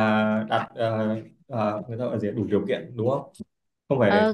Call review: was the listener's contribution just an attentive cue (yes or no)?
no